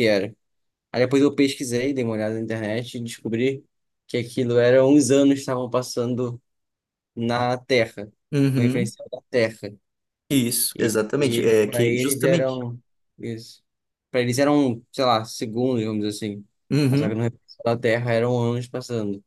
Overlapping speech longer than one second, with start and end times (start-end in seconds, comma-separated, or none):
10.8-12.6